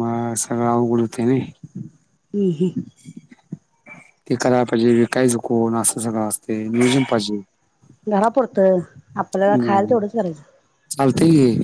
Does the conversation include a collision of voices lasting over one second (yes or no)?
no